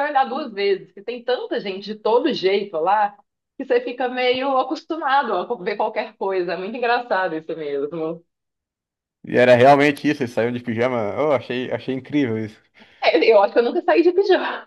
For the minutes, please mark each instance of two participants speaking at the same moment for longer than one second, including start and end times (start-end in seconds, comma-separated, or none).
none